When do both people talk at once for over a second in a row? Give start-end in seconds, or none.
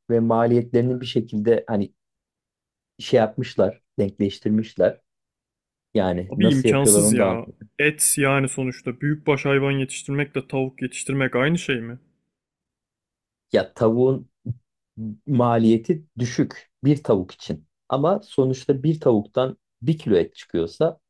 6.3-7.7